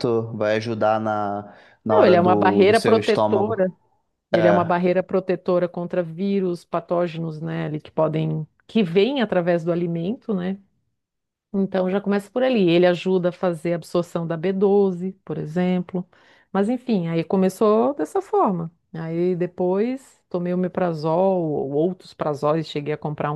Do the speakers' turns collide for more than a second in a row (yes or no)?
yes